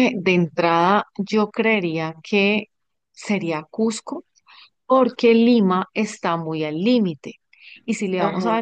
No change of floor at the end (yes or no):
yes